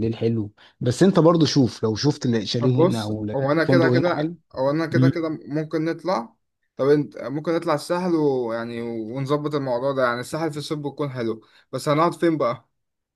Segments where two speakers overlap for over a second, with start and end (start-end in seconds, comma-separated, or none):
2.6-4.3